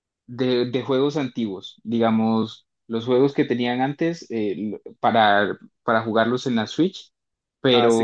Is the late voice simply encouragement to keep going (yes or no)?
no